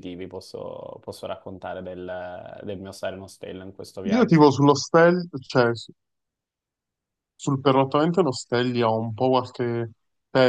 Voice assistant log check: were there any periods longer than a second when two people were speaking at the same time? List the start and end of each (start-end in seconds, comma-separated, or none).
none